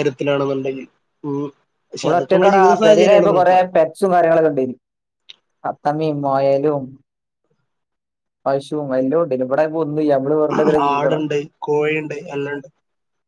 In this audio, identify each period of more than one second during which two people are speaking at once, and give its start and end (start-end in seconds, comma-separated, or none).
2.0-3.6